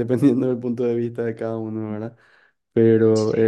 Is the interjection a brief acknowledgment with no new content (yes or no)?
yes